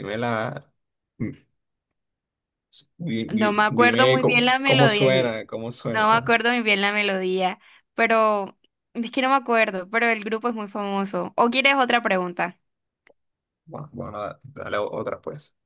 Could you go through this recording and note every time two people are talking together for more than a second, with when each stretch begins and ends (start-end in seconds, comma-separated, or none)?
3.3-5.2